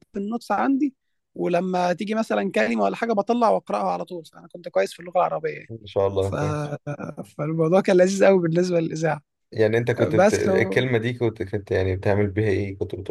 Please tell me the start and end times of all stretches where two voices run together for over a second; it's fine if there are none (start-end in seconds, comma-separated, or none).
none